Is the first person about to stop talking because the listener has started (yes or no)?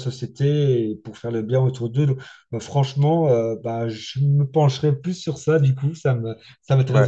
yes